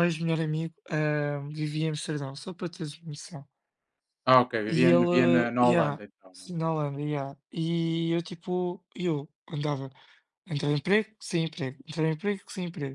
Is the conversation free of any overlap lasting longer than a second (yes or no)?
no